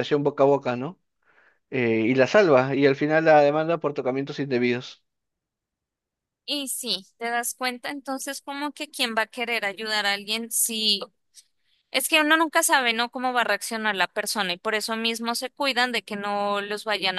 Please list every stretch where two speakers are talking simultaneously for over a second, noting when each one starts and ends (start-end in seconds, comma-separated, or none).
none